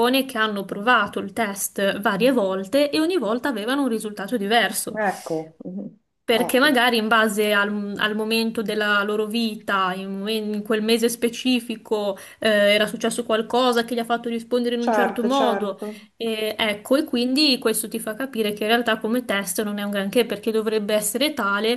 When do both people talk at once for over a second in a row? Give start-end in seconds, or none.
14.8-16.1